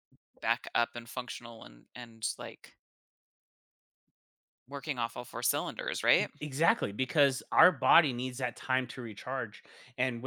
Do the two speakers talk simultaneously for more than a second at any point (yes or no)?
no